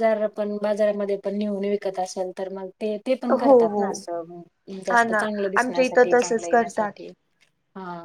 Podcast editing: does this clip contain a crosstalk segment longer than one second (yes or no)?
yes